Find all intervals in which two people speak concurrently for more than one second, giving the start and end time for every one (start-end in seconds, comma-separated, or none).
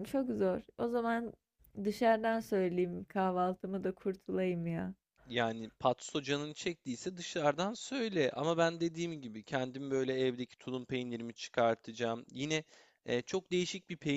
none